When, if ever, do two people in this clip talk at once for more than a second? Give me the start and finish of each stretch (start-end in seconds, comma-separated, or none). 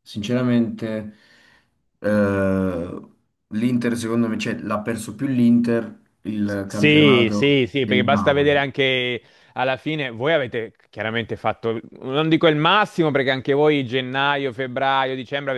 6.6-8.5